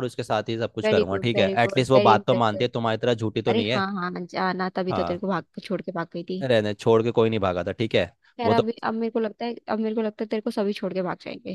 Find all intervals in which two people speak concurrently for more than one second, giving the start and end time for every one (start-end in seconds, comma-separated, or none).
0.8-2.7